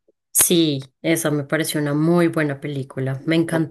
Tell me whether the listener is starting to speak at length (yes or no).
no